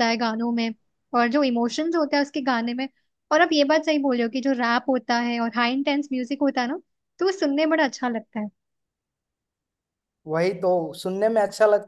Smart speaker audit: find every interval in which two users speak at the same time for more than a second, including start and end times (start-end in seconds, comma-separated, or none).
none